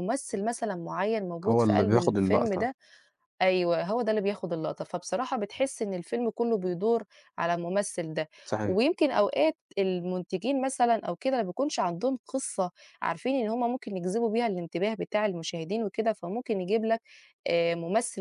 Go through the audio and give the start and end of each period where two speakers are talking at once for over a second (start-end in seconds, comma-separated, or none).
1.5-2.7